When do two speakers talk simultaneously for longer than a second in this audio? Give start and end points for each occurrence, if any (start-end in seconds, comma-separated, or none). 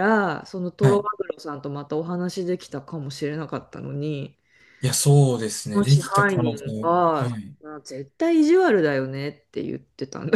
5.7-7.6